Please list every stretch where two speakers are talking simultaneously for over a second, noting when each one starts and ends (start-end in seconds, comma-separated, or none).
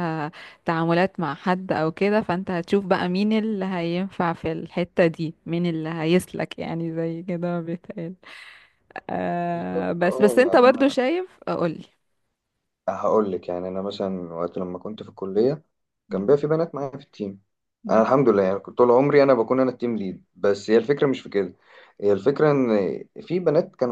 9.5-10.9